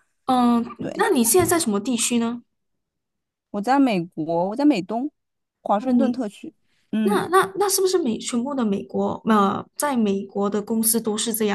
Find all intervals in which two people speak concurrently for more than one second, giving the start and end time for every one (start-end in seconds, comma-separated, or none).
none